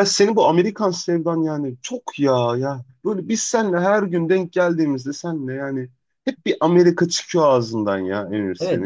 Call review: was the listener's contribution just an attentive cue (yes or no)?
no